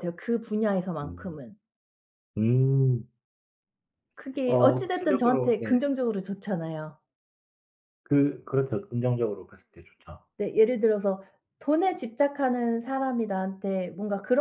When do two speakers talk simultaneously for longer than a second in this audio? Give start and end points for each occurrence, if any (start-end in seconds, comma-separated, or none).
4.5-5.7